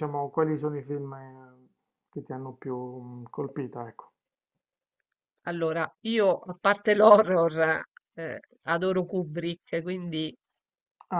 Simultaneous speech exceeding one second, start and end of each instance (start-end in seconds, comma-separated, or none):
none